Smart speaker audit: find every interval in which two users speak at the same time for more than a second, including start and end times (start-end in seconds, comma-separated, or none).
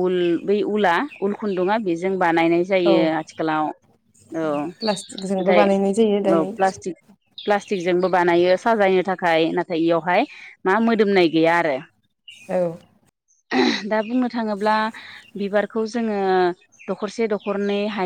none